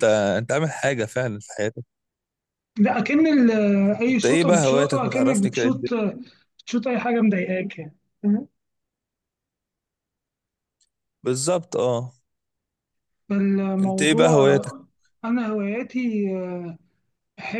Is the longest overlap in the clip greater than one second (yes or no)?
yes